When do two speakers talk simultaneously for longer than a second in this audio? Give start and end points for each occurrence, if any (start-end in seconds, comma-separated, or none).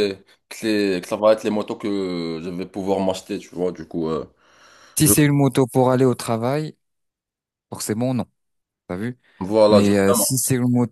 none